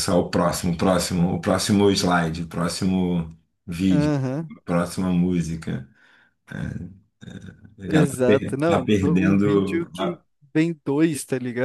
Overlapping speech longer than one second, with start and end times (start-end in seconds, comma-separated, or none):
7.9-10.2